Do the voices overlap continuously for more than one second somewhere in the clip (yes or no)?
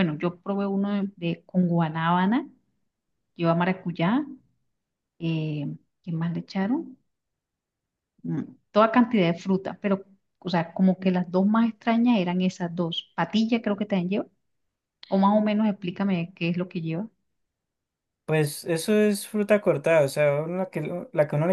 no